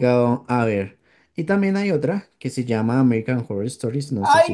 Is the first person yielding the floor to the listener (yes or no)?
yes